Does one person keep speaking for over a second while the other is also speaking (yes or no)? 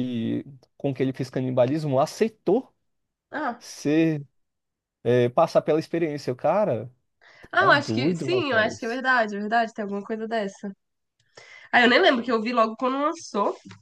yes